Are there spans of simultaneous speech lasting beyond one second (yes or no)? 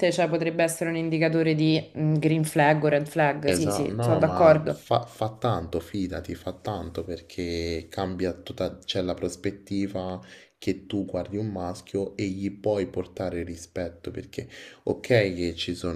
yes